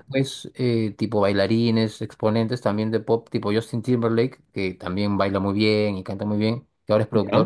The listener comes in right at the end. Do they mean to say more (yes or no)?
no